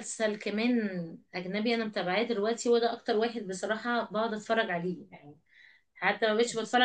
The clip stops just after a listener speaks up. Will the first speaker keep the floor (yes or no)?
yes